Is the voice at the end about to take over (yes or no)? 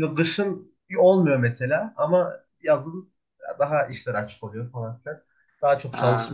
no